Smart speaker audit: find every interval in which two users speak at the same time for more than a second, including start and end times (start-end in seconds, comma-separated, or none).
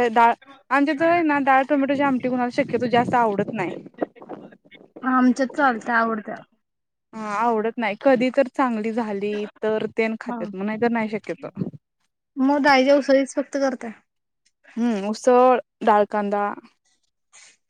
none